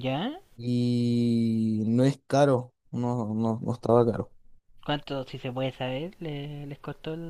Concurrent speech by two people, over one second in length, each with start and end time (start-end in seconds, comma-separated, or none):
none